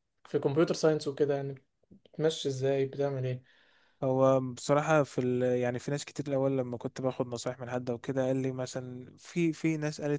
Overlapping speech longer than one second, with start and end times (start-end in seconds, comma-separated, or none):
none